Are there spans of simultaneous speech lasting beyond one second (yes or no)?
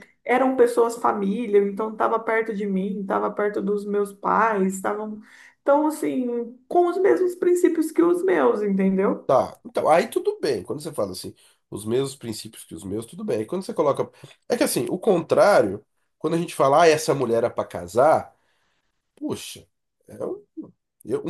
no